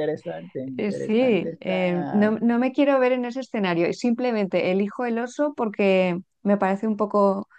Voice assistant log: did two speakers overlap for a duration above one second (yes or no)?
yes